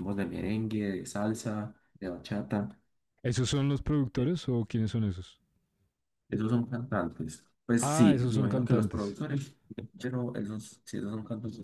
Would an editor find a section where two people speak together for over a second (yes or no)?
yes